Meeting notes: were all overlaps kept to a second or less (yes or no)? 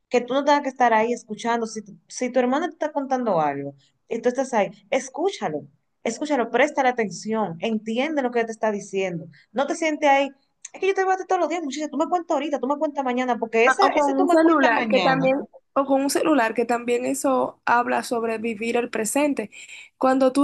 no